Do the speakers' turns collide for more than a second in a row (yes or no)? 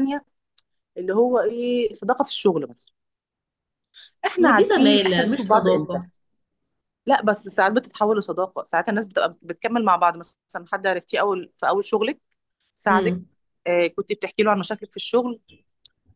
yes